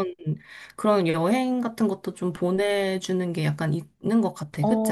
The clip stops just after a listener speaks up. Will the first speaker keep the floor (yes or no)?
no